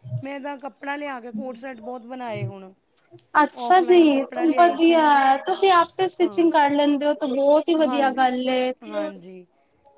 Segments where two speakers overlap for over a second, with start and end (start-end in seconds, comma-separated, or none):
3.5-5.0